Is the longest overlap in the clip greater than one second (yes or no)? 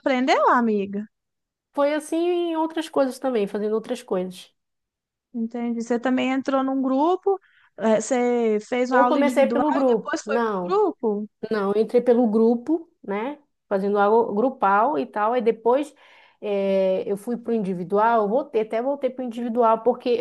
yes